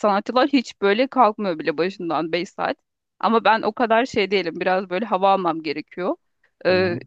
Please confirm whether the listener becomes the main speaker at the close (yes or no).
no